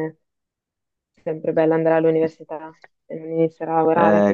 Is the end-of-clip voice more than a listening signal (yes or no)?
yes